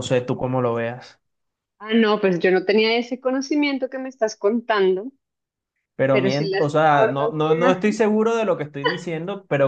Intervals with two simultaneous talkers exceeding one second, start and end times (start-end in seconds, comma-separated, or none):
6.1-8.0